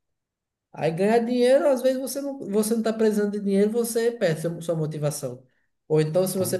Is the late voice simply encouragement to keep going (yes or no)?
yes